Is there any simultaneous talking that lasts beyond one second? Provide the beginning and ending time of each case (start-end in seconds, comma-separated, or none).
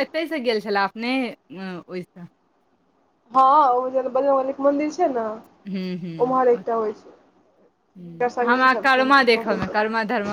8.0-9.6